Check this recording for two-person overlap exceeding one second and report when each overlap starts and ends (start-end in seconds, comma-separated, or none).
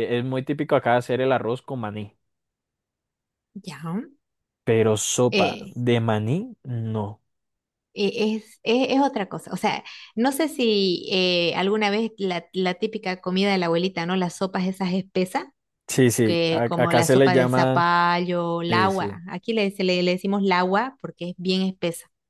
16.2-17.8